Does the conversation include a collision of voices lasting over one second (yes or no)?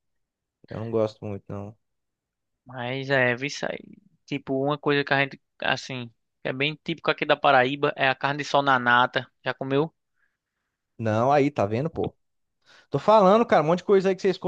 no